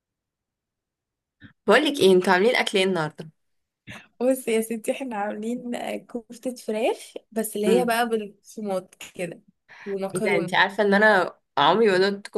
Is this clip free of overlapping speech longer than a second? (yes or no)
yes